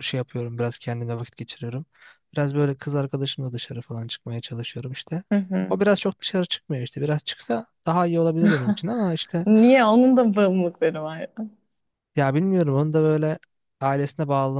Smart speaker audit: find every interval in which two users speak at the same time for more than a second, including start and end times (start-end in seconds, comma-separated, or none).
none